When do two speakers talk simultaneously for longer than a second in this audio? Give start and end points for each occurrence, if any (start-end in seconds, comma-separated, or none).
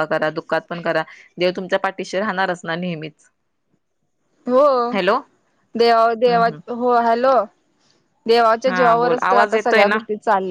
8.7-10.0